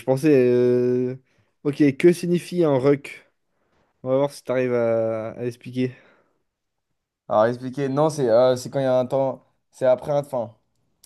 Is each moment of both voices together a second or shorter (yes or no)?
yes